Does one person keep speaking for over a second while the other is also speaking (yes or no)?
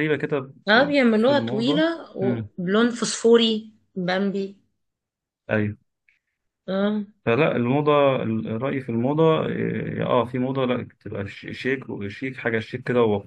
yes